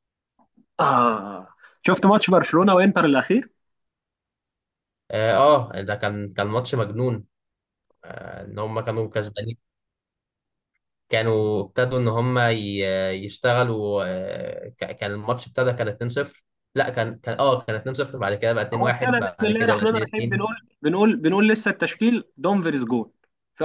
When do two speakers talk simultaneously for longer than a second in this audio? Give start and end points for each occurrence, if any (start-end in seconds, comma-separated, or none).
18.7-20.5